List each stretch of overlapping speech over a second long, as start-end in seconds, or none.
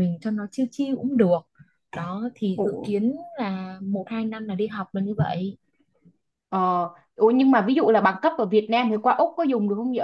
none